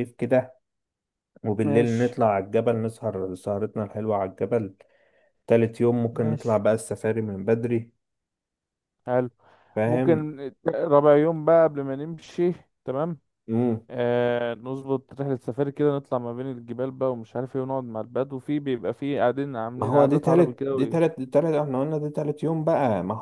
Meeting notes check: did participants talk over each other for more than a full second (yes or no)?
yes